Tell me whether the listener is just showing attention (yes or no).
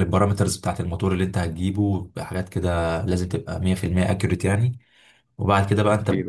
yes